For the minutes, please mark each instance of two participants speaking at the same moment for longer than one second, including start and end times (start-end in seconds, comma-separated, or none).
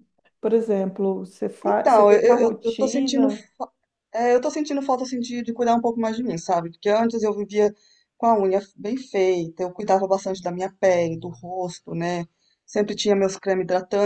1.6-3.3